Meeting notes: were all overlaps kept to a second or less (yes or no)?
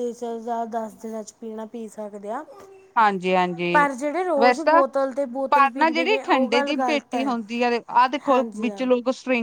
no